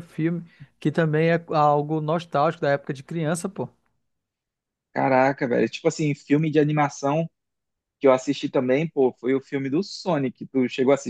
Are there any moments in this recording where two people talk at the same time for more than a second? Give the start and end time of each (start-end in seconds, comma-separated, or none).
none